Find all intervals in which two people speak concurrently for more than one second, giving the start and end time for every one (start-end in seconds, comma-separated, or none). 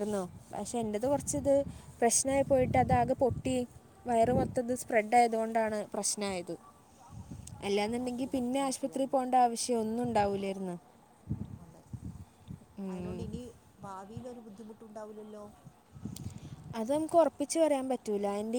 7.8-9.2